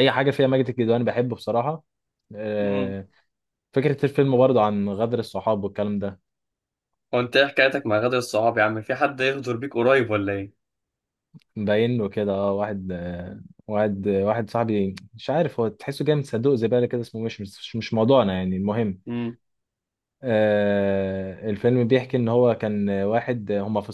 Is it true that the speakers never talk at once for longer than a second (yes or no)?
yes